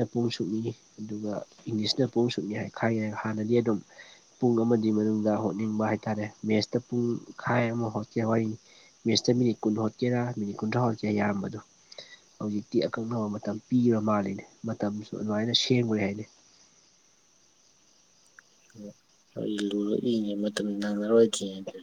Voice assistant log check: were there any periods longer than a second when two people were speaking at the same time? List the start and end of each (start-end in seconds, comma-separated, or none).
none